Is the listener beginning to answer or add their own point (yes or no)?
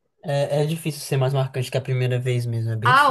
yes